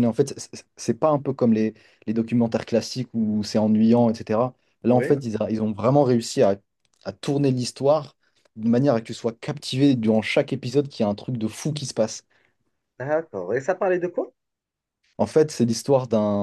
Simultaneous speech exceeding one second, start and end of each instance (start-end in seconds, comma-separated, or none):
none